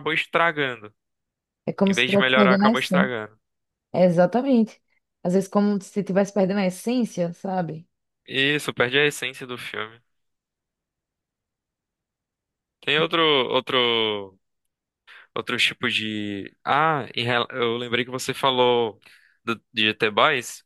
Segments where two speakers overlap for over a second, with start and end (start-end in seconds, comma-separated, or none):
1.9-3.1